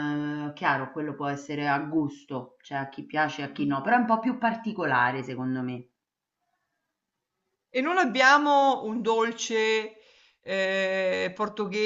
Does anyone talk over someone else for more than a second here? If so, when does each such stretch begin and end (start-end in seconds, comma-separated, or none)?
none